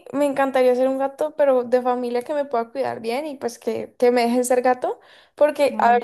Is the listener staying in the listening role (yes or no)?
yes